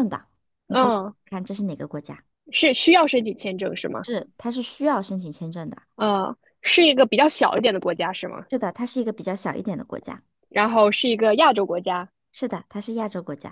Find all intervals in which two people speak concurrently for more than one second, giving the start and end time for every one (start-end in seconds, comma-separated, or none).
none